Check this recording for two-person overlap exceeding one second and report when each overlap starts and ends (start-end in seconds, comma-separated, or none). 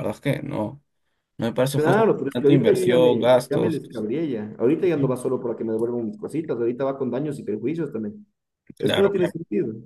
1.7-3.8